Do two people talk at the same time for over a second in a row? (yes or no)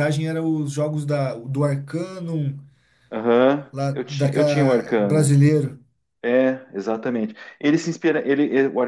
yes